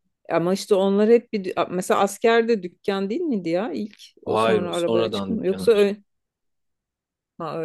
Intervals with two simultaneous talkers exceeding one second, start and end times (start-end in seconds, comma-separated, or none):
4.2-5.9